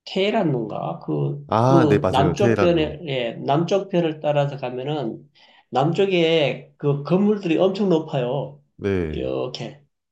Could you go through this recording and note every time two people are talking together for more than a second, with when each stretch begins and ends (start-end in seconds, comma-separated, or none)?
1.5-3.0